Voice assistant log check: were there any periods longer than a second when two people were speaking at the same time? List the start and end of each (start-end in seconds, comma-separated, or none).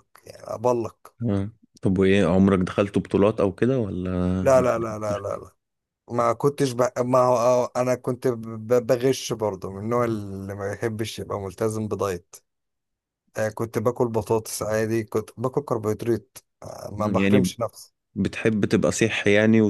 none